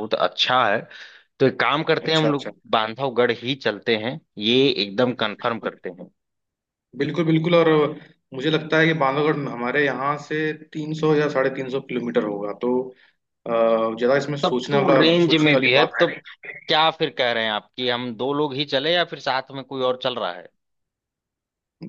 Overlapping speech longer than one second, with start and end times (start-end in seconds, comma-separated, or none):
14.4-16.2